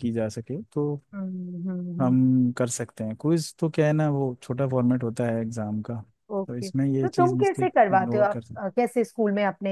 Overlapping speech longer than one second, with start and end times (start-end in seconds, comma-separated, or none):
6.5-8.8